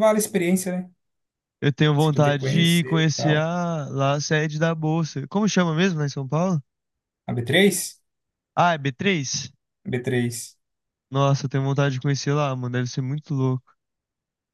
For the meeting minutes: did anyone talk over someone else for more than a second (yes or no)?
yes